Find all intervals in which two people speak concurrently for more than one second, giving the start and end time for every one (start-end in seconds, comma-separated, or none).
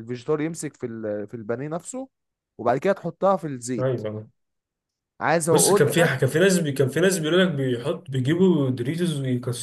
none